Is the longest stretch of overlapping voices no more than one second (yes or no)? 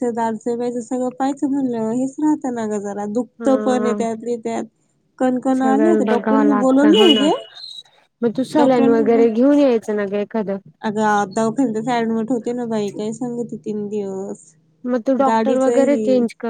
no